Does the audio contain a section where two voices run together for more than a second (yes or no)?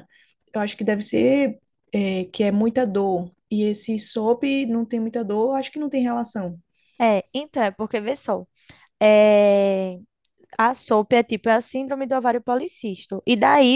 no